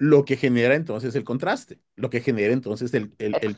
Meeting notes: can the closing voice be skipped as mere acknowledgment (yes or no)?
yes